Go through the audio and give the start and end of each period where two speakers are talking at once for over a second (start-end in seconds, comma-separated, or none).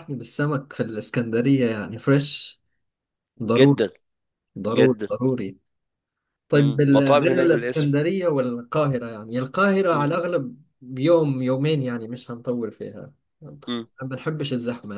6.5-8.0